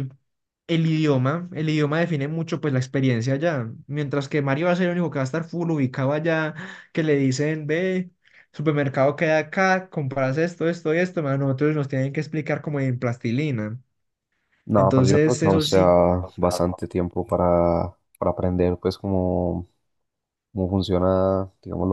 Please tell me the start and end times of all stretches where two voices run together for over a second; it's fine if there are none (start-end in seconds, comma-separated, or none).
14.8-16.0